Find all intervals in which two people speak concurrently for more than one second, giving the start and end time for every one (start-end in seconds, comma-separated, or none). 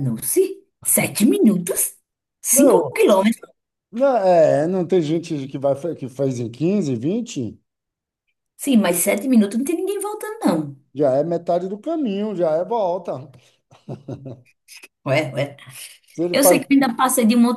none